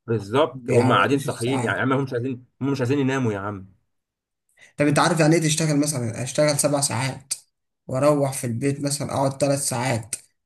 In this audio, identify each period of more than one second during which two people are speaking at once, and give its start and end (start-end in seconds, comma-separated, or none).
0.5-1.8